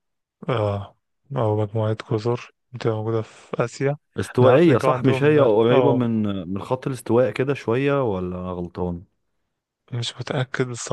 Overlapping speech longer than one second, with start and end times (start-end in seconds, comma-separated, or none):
4.4-6.0